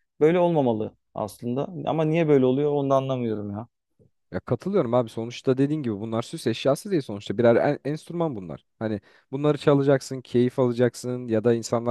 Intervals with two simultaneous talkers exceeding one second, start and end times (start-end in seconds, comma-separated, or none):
none